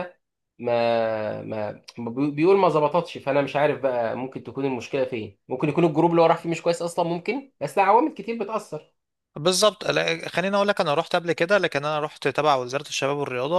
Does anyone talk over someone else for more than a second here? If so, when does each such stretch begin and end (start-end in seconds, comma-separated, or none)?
none